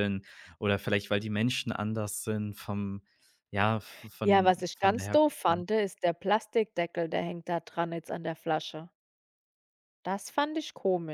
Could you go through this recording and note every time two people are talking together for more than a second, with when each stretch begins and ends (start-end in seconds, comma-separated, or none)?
4.2-5.6